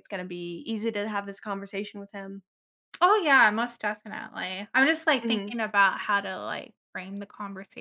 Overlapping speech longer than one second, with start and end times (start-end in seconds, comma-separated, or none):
none